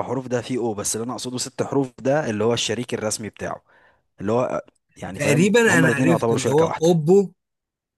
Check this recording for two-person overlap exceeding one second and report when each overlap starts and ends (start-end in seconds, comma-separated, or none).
5.1-7.0